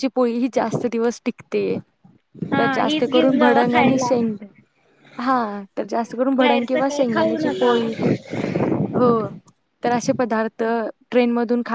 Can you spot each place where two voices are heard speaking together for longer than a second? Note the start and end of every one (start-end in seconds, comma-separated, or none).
2.6-4.1, 6.4-7.7